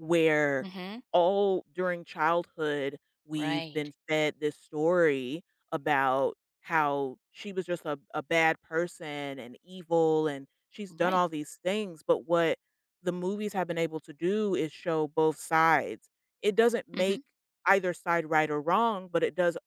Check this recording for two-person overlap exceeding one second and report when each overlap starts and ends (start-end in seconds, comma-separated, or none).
none